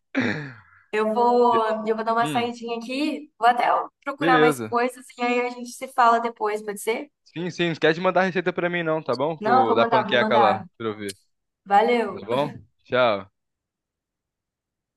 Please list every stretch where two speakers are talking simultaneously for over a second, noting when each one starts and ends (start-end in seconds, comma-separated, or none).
9.4-10.7